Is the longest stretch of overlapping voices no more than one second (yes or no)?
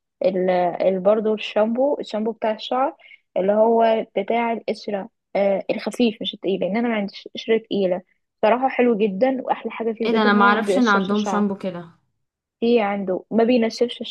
no